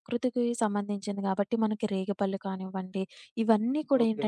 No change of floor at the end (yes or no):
yes